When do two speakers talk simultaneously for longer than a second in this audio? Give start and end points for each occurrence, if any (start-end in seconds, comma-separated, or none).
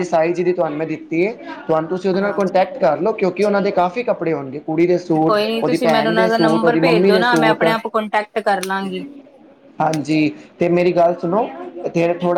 5.3-7.6